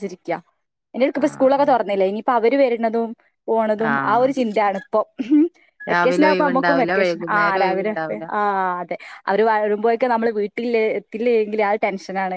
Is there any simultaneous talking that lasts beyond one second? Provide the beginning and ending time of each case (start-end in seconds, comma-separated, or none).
5.9-8.2